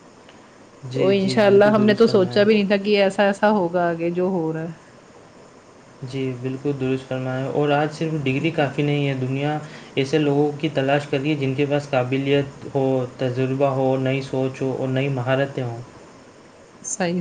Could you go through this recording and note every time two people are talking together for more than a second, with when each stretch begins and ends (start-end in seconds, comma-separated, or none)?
0.9-2.4